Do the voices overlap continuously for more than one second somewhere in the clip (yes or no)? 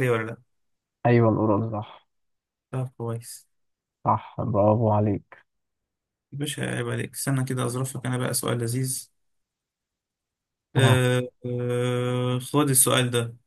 no